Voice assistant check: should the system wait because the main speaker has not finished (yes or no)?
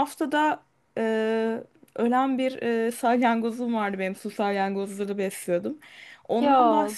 yes